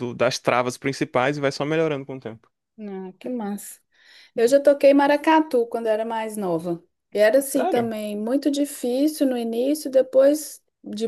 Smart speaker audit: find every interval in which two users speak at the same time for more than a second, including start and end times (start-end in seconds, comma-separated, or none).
none